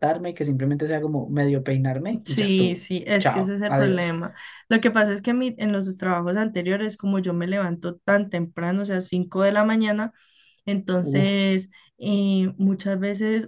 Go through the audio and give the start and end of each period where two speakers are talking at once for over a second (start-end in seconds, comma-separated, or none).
2.2-4.2